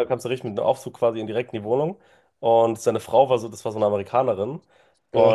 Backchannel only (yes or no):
yes